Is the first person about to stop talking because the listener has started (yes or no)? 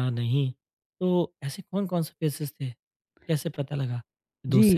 yes